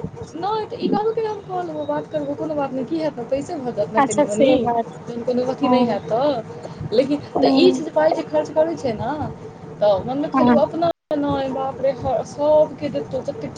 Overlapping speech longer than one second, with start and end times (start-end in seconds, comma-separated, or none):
none